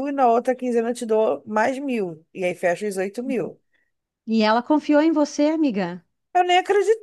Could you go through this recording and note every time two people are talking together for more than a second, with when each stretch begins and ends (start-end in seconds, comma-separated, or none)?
none